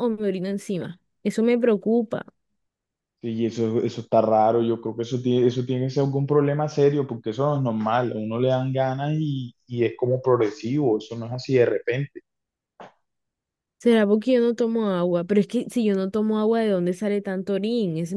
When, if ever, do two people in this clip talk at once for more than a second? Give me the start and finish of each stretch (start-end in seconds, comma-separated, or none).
none